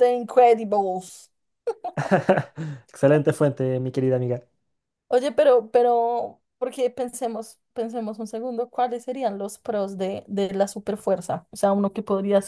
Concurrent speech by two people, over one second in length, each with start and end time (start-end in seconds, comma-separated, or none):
none